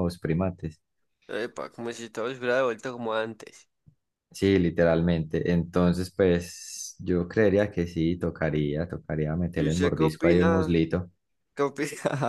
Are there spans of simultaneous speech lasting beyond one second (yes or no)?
yes